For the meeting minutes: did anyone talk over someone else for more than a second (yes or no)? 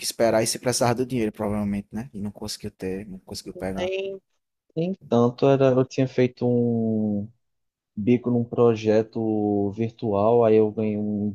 no